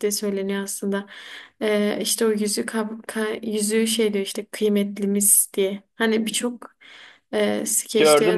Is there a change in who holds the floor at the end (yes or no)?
yes